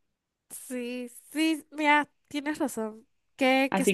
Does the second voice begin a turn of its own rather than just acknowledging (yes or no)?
no